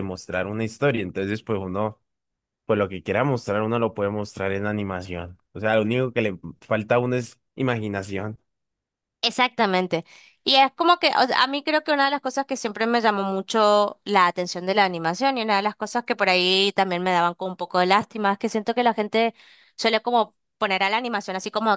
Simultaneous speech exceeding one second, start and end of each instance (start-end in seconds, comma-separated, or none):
none